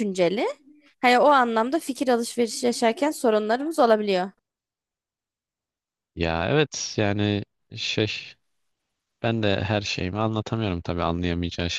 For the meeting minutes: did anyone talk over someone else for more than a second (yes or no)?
no